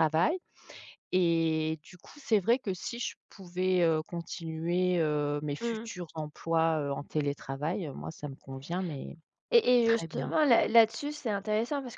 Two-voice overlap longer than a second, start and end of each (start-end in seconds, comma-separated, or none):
none